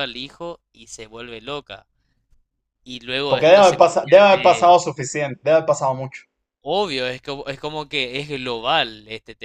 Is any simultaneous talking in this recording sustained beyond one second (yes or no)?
yes